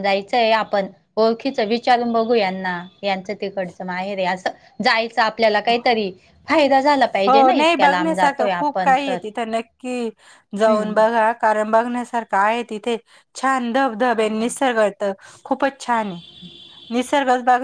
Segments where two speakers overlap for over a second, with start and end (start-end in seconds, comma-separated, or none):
none